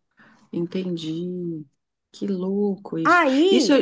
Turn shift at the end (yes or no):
no